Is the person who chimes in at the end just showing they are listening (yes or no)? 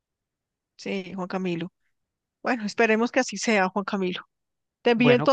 yes